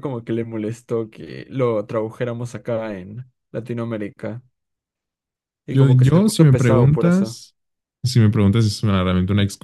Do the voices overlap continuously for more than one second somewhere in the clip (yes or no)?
yes